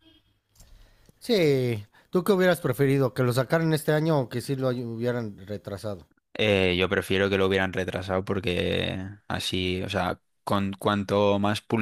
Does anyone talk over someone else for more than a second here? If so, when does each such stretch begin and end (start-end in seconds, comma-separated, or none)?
none